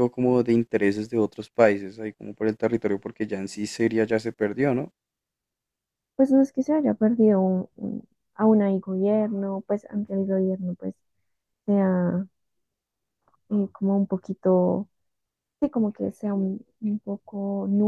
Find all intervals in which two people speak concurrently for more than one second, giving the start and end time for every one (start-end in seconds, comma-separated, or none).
none